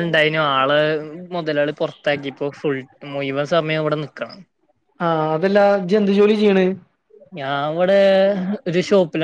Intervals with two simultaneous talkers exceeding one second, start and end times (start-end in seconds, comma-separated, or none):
none